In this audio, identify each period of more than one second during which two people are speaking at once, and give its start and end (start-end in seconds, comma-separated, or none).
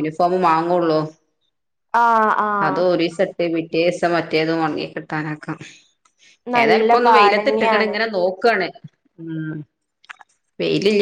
6.6-7.9